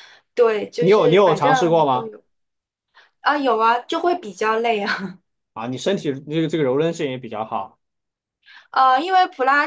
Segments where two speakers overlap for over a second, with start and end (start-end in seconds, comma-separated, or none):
0.8-2.1